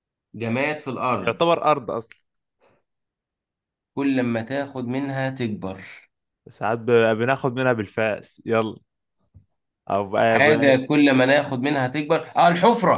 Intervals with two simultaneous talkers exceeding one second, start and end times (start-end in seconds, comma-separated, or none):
none